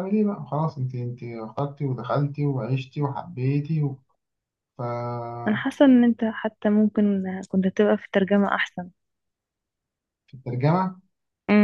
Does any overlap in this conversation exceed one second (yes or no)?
no